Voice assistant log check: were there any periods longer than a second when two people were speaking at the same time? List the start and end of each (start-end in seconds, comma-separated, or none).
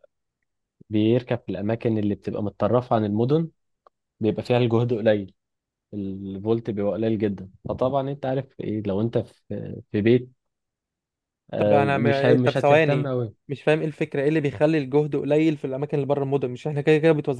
11.6-13.1